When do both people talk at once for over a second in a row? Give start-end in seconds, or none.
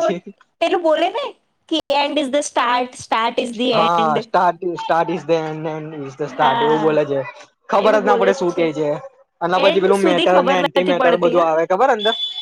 9.7-11.4